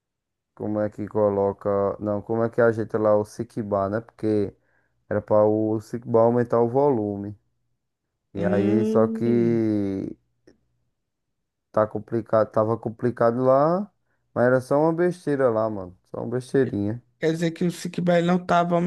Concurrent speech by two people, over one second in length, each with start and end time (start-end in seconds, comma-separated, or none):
8.4-9.6